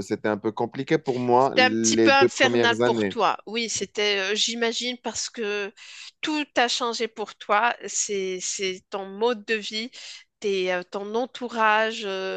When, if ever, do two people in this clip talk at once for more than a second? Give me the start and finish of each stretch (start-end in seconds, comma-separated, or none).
1.4-3.1